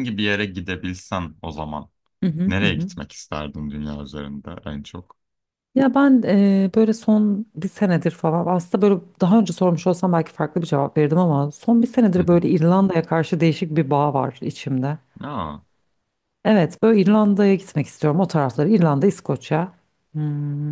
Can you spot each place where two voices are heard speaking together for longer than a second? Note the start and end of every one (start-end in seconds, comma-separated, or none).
none